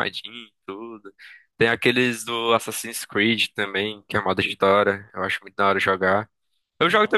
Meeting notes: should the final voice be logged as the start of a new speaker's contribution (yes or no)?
no